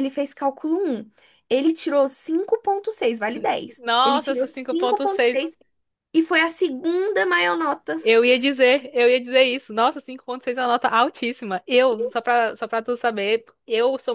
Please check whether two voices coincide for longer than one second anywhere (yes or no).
yes